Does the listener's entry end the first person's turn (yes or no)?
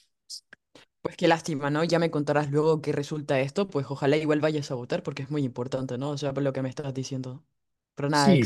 yes